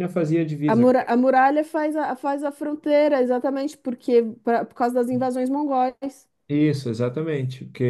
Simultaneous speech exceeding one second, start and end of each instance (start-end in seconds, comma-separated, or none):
none